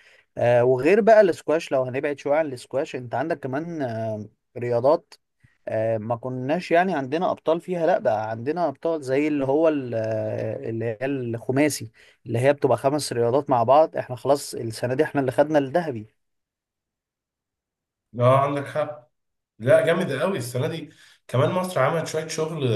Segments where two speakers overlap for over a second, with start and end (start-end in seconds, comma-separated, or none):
none